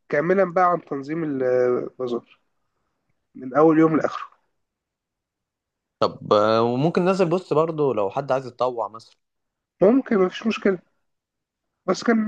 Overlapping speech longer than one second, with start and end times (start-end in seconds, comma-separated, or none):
none